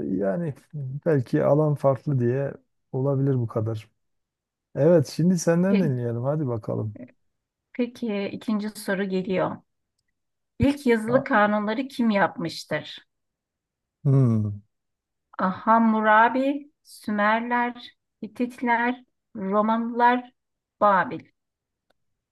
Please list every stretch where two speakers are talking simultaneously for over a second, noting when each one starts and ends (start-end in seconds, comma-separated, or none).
none